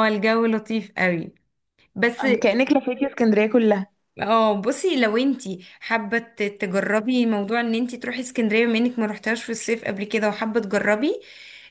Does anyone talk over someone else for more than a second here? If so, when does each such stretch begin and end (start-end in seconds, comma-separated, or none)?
none